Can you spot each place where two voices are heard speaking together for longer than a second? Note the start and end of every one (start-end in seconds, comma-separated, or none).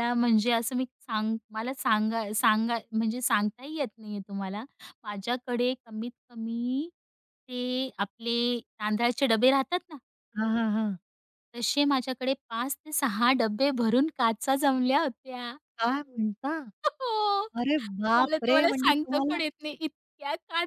18.1-19.4